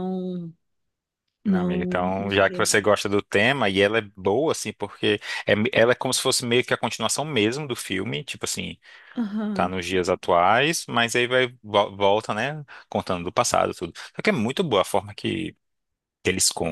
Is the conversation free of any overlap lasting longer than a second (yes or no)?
no